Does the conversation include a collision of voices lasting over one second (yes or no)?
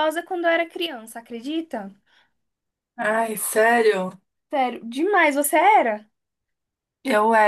no